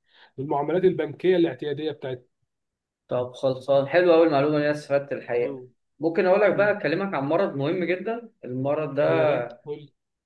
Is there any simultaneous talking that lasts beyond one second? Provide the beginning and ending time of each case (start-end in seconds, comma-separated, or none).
none